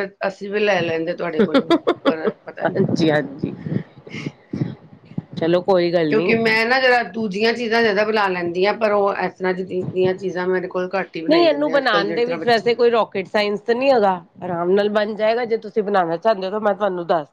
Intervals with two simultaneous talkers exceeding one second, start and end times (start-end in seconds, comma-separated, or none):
none